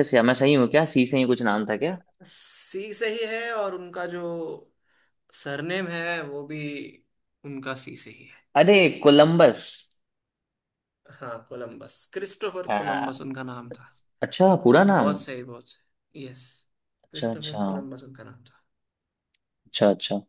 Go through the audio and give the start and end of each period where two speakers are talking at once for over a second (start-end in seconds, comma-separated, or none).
none